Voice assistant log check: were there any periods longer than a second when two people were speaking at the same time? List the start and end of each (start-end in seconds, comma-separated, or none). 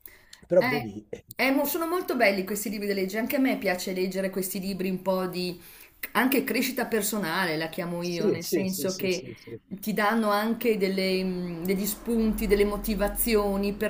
8.0-9.3